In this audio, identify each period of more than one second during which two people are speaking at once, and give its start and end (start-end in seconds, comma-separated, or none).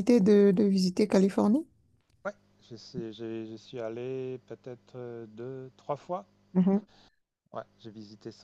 none